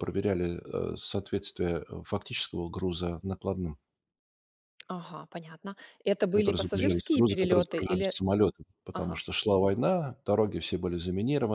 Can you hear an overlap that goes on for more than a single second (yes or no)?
yes